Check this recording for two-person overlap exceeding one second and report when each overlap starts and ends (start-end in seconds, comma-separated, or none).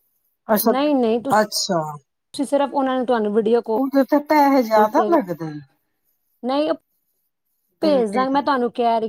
none